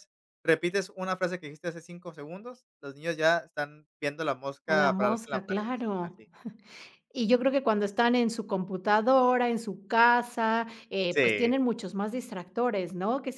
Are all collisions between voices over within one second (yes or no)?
no